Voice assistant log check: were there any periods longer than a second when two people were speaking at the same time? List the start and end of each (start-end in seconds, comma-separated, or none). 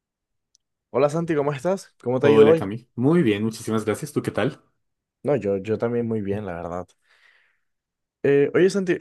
none